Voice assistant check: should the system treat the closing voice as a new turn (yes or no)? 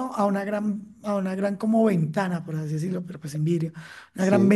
no